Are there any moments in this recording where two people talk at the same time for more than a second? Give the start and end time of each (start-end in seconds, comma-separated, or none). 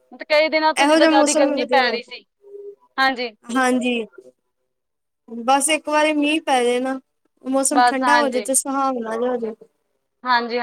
0.8-2.2